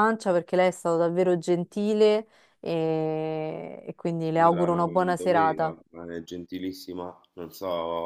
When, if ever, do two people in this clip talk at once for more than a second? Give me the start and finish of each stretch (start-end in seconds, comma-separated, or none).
4.2-5.7